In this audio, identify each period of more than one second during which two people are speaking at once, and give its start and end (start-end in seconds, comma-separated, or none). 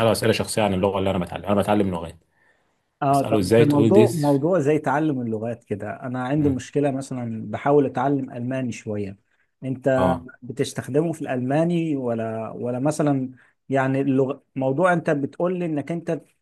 3.1-4.4